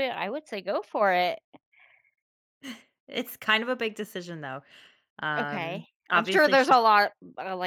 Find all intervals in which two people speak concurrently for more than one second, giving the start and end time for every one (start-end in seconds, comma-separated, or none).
5.4-6.8